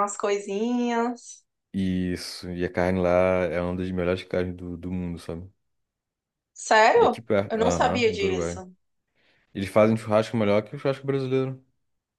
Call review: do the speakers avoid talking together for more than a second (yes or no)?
no